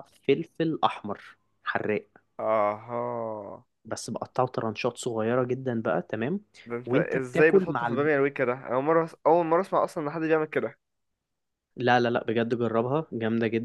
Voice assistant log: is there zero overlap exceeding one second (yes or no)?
no